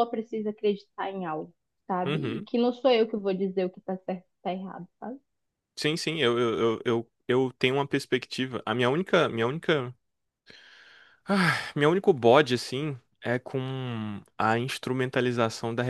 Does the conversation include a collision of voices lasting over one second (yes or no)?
no